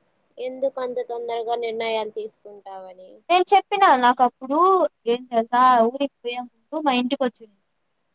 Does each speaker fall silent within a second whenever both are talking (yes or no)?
yes